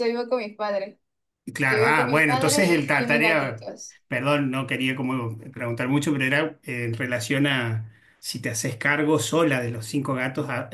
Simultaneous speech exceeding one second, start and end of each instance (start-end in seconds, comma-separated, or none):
1.7-3.7